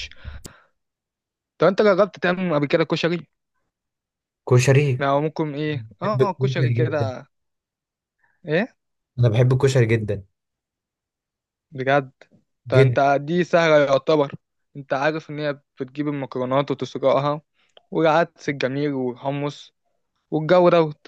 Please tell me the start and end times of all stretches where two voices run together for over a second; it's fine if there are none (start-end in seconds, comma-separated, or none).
5.8-7.1